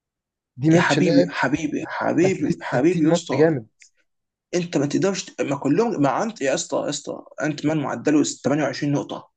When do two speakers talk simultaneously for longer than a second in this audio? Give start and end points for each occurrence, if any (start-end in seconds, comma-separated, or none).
2.2-3.6